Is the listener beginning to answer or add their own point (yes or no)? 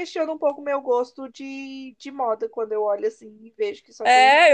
yes